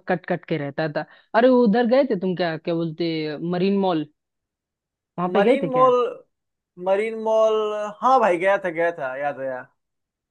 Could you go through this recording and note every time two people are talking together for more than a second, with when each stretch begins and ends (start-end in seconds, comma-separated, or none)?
none